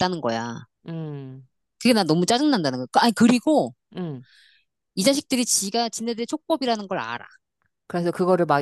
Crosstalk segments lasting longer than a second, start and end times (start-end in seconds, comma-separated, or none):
none